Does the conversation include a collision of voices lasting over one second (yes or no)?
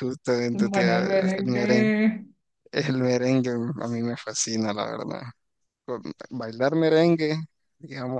yes